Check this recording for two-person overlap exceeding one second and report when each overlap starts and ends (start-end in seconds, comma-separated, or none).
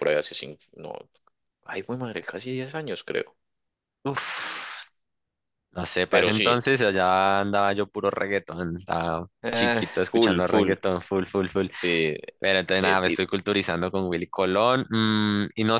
9.4-10.8